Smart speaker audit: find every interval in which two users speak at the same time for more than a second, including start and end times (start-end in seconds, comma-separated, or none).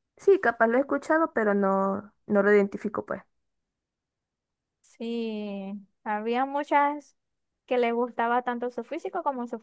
none